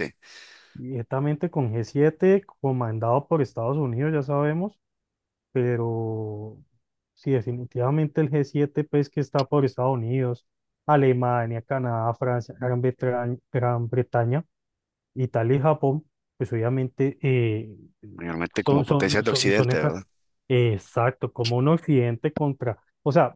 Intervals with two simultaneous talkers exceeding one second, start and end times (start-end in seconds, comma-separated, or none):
18.6-19.9